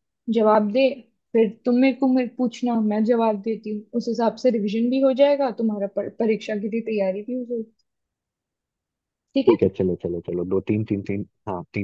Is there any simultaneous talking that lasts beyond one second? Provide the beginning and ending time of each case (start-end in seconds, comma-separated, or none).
none